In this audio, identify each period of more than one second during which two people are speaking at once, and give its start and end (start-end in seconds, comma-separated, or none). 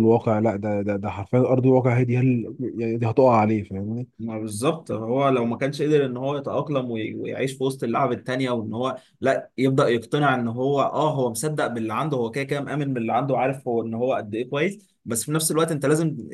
none